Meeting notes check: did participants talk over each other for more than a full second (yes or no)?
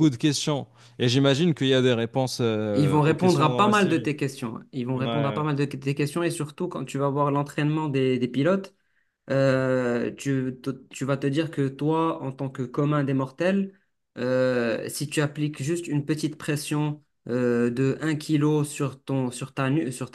yes